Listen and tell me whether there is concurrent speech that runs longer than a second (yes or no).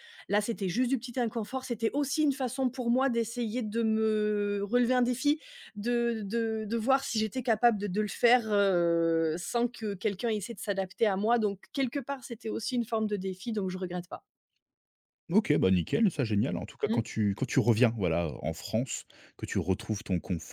no